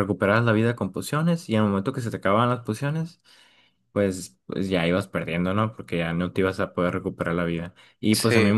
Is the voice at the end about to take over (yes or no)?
no